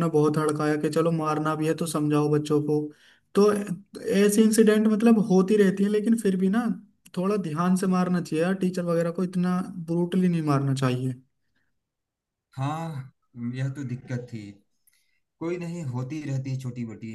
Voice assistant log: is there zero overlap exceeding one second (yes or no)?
yes